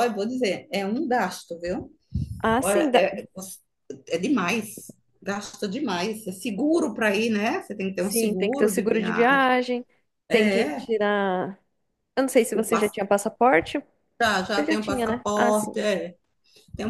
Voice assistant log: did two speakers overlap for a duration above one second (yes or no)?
yes